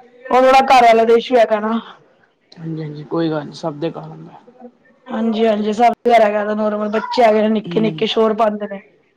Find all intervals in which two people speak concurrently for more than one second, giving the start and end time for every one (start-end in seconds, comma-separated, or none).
none